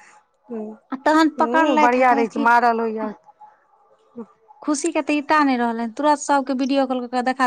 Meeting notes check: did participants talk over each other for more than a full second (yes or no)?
yes